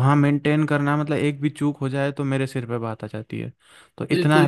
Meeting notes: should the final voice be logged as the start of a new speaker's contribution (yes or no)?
yes